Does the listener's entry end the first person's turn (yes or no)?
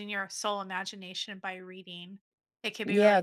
yes